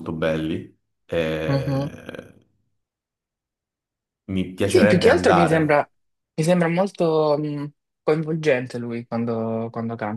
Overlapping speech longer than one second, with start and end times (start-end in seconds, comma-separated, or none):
4.6-5.8